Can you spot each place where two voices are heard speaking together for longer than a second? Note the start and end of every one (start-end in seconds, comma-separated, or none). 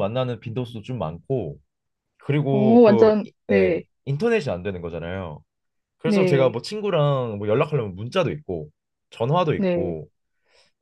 2.5-3.8